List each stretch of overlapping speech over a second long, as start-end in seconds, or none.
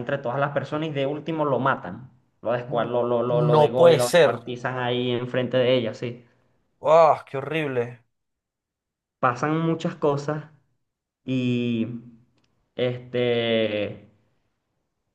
2.7-4.5